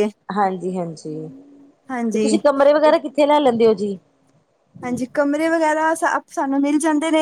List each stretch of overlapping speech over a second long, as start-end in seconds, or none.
none